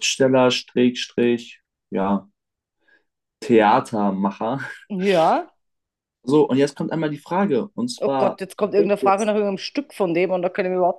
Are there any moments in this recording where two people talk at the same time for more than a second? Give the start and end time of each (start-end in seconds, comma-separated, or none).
8.0-9.3